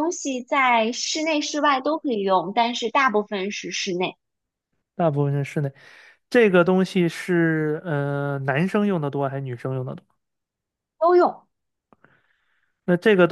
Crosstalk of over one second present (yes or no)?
no